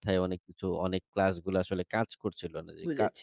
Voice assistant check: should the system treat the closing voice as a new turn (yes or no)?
no